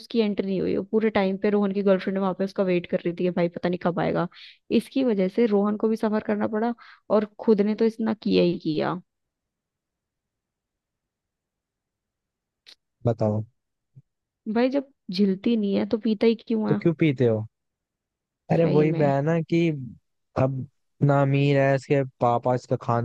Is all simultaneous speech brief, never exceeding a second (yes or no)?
yes